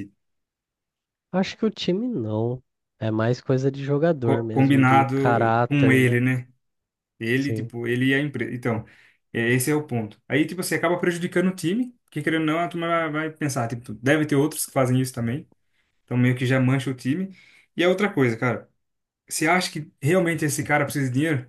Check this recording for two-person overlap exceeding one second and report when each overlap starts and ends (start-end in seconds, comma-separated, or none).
4.2-6.2